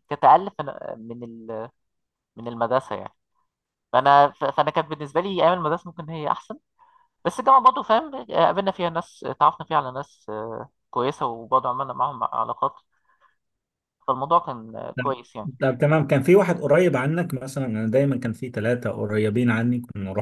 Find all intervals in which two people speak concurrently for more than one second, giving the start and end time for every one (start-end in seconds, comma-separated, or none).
none